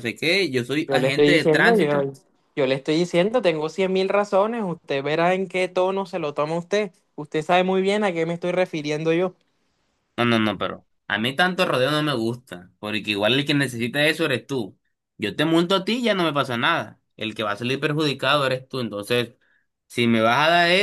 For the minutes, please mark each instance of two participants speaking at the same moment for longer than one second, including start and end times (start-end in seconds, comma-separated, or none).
0.9-2.1